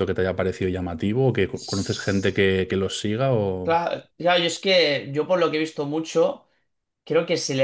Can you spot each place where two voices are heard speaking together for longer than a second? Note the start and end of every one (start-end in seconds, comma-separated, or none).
none